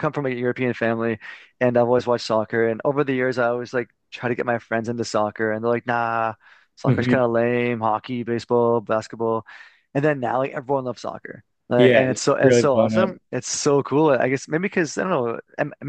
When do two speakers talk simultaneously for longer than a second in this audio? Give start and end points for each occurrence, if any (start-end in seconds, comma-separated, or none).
11.8-13.2